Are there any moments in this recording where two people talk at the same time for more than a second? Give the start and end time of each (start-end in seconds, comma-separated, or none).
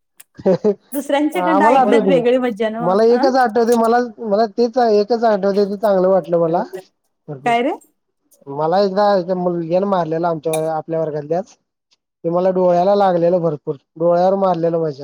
0.9-2.2